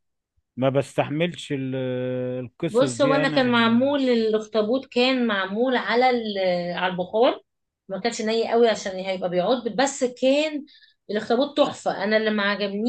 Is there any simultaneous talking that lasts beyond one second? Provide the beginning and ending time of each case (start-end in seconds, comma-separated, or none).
2.7-3.9